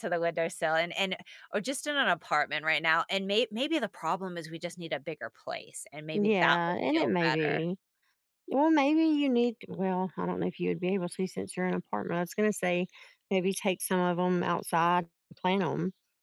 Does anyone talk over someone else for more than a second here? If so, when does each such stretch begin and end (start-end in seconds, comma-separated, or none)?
6.1-7.7